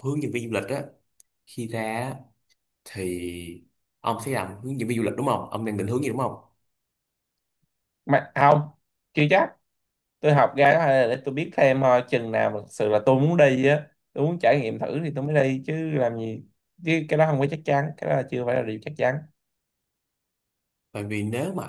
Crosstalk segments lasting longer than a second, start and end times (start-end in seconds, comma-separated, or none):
none